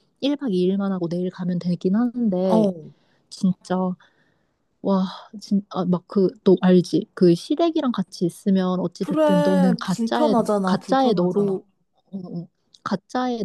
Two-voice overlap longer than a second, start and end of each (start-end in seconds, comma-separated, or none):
9.0-11.6